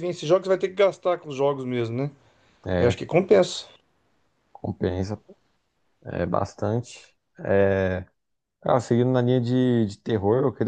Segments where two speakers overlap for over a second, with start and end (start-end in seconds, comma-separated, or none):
none